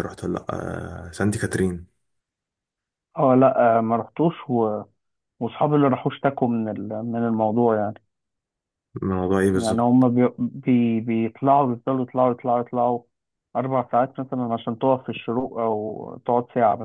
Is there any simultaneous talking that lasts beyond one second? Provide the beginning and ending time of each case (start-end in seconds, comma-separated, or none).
none